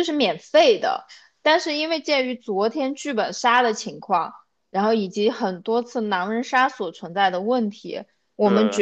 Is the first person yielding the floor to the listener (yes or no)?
no